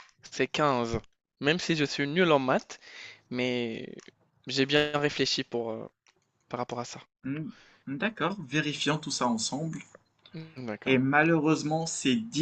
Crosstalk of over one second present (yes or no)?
no